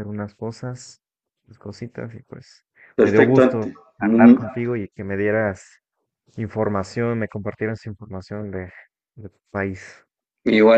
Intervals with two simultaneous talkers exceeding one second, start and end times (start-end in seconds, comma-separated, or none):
2.9-4.4